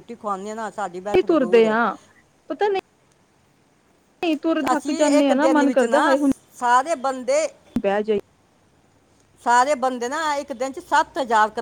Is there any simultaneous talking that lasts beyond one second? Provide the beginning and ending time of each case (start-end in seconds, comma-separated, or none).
4.7-6.2